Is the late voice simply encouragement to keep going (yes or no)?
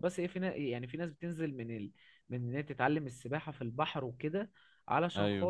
yes